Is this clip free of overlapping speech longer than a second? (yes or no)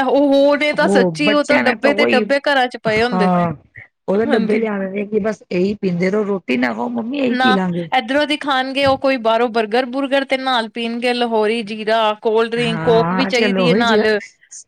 no